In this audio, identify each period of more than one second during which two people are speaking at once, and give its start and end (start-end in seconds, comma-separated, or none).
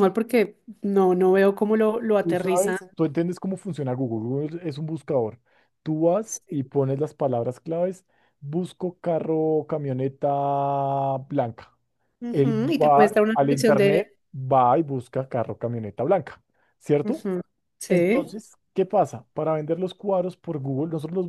12.3-14.1